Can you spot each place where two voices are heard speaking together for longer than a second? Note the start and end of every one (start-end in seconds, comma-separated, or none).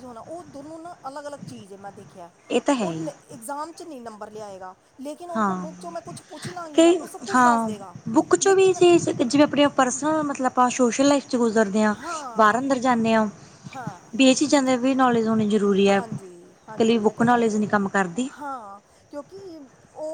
16.0-17.6